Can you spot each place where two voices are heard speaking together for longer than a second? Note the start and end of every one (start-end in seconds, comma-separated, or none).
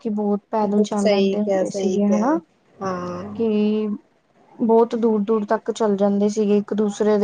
1.0-2.4